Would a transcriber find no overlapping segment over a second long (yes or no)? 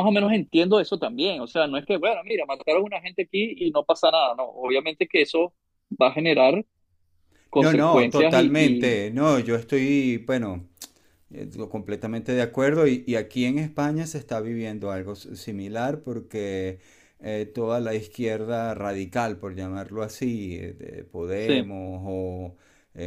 no